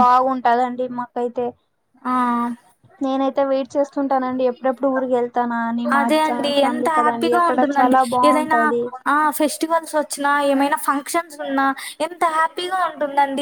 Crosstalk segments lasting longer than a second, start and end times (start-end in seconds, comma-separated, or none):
6.0-8.6